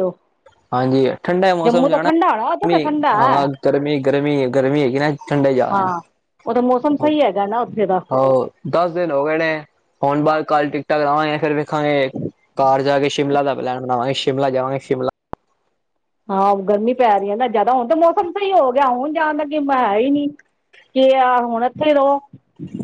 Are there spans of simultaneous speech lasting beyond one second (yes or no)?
yes